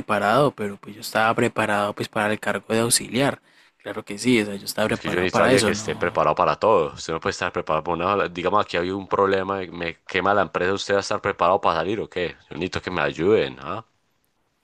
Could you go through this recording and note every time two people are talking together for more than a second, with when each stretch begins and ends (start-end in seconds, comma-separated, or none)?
4.8-6.3